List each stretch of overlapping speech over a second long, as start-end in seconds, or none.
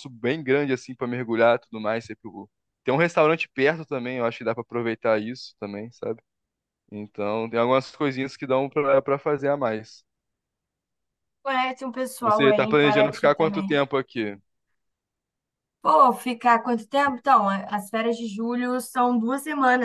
12.2-13.7